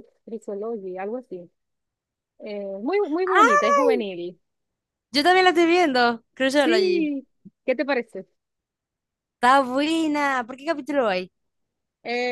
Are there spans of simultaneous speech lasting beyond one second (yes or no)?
no